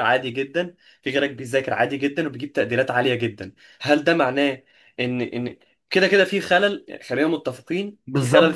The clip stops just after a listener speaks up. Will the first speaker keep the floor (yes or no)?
no